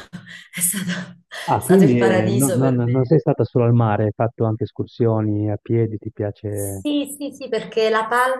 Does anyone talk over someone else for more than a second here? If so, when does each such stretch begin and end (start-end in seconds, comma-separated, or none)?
1.4-2.9